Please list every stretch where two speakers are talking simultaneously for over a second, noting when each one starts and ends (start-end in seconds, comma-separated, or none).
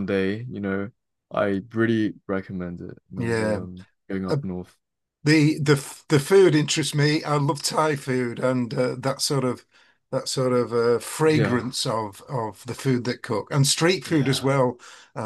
none